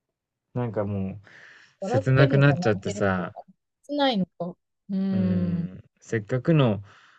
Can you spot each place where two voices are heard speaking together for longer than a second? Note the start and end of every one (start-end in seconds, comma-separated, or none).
1.8-3.4